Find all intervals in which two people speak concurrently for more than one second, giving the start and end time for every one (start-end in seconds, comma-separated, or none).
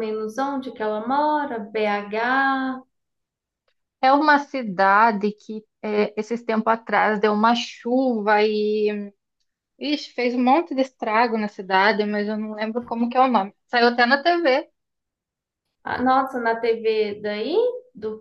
none